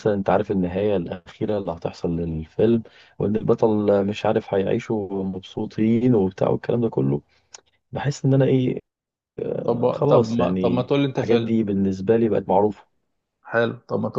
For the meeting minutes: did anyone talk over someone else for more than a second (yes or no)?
yes